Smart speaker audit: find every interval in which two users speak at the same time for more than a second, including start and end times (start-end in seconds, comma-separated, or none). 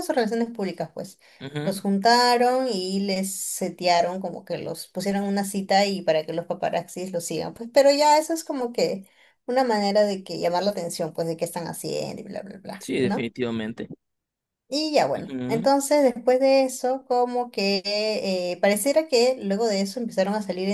none